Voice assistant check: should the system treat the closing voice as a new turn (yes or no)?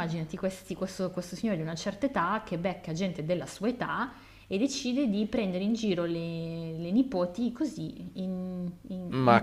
yes